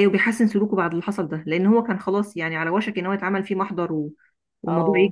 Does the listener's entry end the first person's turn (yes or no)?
yes